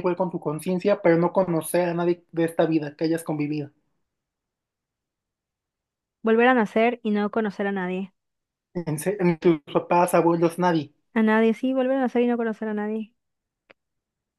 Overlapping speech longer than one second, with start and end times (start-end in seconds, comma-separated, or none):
none